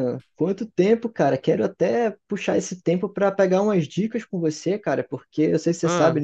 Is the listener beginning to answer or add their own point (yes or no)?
no